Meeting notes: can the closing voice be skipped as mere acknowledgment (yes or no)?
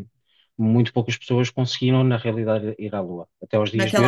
no